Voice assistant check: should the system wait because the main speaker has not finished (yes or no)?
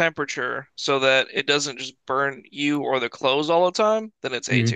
no